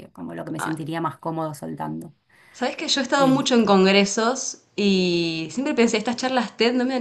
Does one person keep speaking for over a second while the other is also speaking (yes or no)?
no